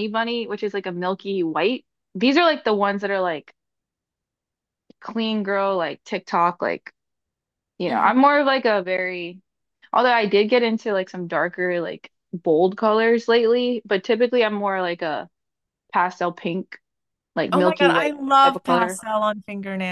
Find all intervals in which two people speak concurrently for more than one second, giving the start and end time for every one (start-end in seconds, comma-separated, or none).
17.5-19.0